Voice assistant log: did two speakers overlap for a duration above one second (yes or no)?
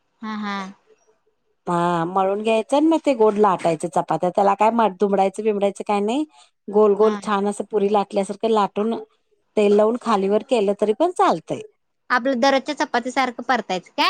no